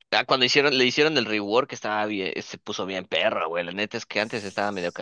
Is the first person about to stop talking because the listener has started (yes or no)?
no